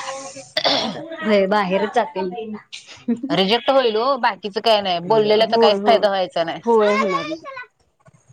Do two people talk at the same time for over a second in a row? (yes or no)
no